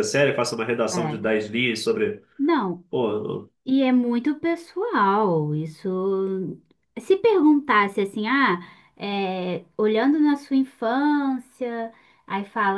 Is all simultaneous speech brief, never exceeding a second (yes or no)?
yes